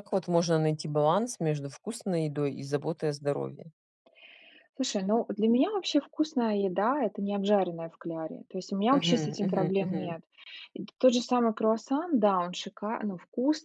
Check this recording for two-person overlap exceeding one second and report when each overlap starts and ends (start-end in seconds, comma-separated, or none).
8.9-10.2